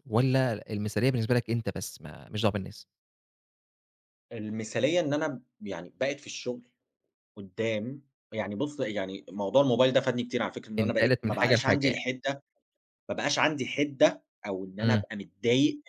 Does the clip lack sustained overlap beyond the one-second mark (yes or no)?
no